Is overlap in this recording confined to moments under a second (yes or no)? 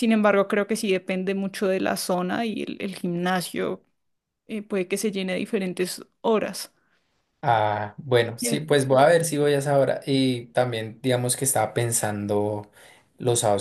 yes